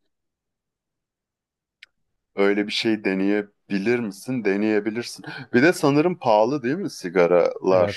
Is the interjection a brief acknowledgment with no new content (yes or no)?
no